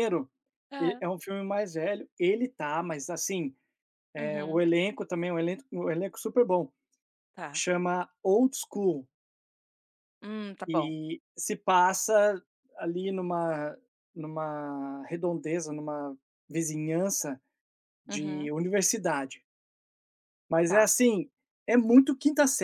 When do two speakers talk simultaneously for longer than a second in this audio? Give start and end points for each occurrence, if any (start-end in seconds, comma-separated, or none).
none